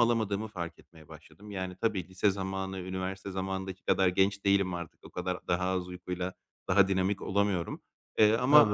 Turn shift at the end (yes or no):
no